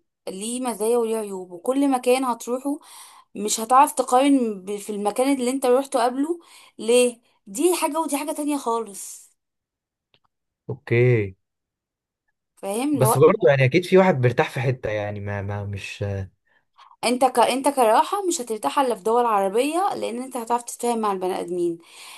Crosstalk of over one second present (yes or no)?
no